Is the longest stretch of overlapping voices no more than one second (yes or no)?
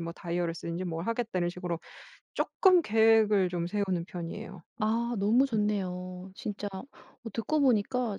yes